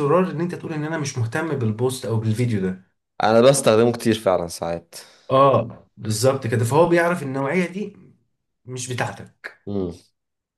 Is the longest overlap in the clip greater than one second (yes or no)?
no